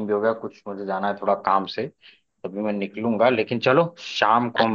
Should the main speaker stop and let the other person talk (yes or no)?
no